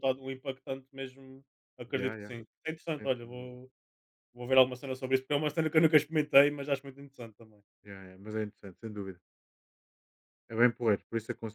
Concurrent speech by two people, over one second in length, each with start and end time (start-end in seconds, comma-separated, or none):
none